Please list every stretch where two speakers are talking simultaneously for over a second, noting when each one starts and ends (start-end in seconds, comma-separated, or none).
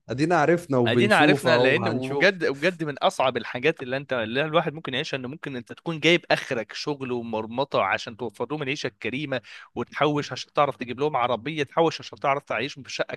0.9-2.4